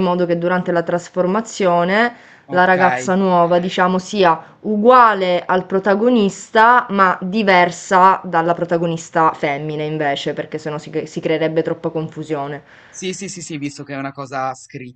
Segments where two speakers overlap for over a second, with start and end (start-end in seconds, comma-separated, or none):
none